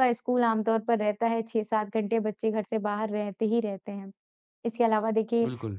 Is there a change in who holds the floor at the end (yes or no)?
no